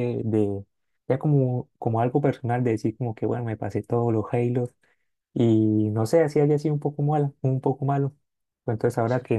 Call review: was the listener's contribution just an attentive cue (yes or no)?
yes